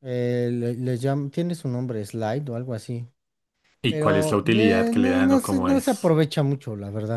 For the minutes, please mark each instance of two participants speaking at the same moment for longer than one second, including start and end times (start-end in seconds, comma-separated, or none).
3.9-6.2